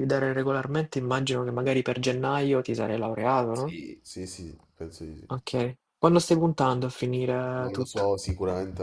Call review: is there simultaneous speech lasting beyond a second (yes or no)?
no